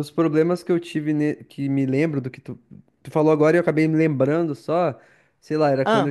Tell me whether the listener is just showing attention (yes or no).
yes